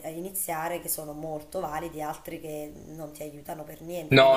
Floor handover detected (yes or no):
yes